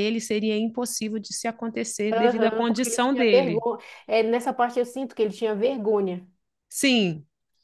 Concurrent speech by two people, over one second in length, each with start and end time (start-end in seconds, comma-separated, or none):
2.1-3.6